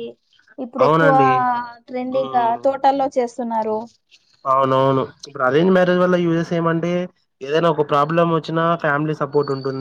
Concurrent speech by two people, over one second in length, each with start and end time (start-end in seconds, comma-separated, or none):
none